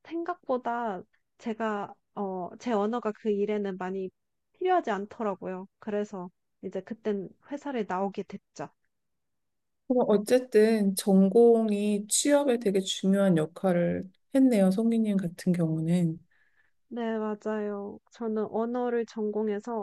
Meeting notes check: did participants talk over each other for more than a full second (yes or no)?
no